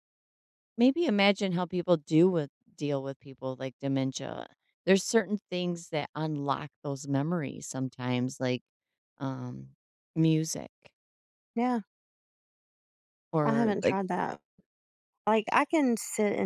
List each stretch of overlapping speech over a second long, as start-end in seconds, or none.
none